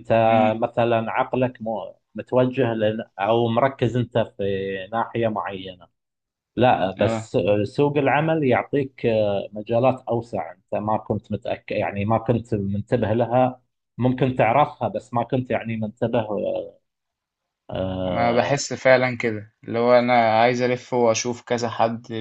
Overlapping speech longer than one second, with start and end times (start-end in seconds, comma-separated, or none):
none